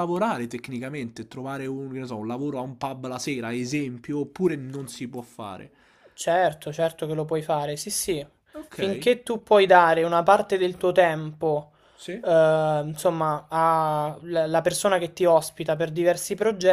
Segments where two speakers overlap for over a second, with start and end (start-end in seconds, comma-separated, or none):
none